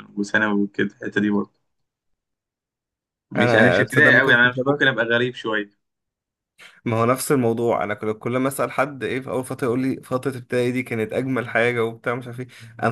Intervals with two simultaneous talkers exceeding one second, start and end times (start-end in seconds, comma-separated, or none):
3.4-4.9